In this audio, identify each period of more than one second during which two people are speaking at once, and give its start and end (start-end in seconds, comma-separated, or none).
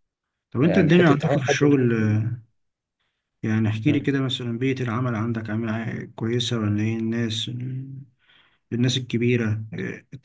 0.6-2.3